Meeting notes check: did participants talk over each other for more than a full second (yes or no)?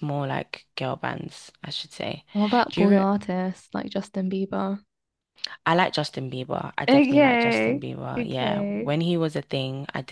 yes